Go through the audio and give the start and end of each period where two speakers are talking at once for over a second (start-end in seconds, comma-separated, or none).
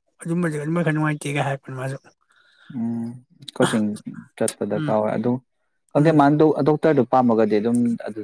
none